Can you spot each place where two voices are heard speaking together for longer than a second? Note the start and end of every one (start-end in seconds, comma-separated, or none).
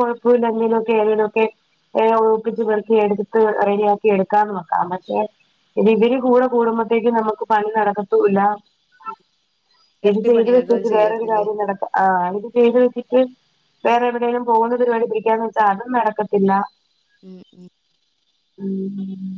10.1-11.5